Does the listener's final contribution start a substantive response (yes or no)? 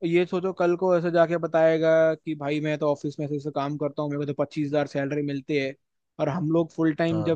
no